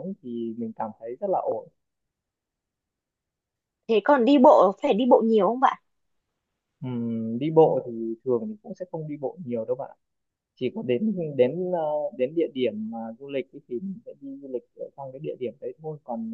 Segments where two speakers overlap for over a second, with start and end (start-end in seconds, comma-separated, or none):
none